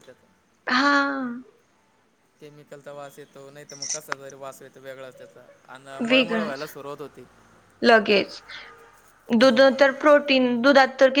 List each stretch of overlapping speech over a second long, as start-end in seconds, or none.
none